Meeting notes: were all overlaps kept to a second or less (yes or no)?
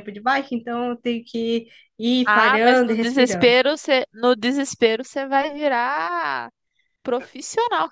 no